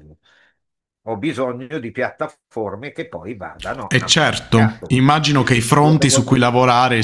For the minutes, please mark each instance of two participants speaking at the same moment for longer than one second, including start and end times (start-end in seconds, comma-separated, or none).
3.9-6.5